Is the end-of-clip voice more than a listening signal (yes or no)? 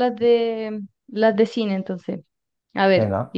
no